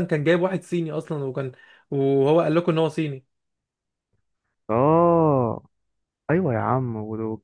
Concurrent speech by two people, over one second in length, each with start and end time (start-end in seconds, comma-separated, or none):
none